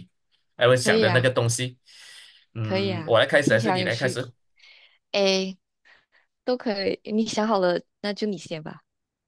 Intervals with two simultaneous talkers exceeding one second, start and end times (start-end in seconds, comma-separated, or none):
2.6-4.2